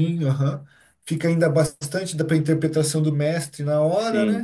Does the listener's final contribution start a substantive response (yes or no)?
yes